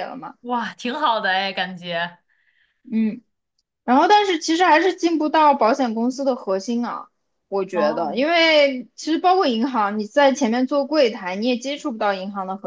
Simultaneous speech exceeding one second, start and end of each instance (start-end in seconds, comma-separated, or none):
none